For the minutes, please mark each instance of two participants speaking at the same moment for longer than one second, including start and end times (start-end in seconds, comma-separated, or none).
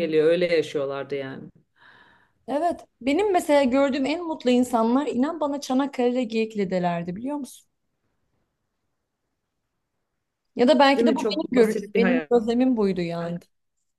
11.0-12.3